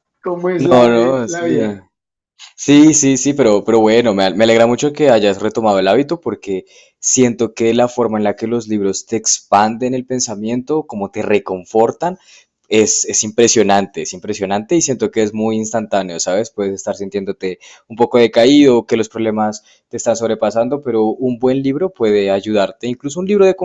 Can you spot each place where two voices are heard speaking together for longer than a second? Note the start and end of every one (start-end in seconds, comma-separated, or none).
0.6-1.8